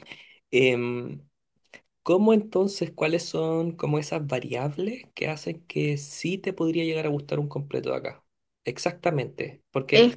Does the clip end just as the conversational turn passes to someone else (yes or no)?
no